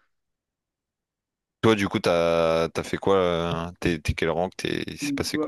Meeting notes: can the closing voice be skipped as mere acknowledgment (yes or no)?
no